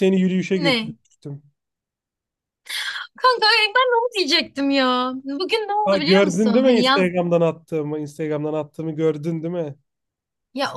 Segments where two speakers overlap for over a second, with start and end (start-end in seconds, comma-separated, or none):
5.8-7.1